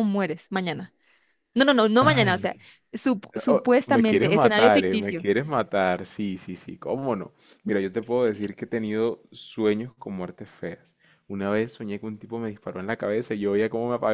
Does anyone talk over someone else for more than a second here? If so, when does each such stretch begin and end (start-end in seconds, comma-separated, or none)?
3.5-5.2